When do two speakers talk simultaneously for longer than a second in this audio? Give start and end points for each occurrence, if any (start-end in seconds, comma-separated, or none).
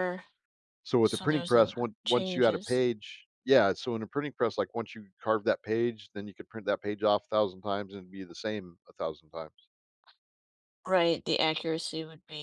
1.0-2.8